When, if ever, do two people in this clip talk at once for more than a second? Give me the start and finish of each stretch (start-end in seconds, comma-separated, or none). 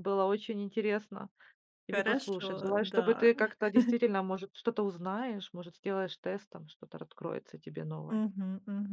1.9-3.3